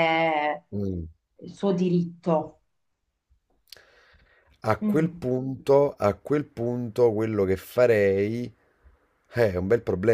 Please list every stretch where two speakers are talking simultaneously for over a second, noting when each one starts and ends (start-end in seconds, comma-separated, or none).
none